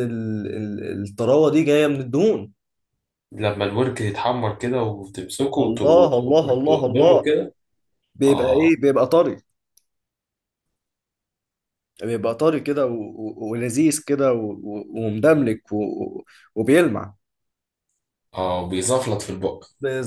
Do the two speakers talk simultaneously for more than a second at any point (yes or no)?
yes